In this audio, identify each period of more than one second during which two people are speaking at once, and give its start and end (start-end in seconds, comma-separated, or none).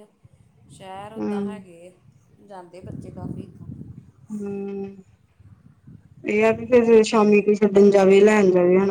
none